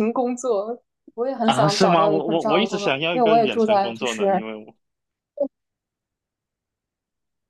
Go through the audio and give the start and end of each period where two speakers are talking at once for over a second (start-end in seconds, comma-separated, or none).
1.4-4.4